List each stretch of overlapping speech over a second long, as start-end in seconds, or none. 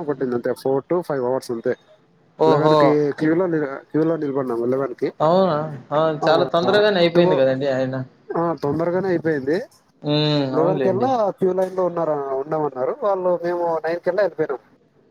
none